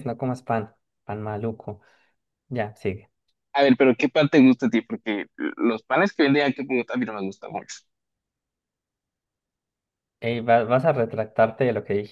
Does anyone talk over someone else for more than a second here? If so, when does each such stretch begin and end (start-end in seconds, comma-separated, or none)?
none